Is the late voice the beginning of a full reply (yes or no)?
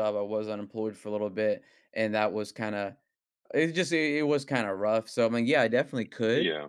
no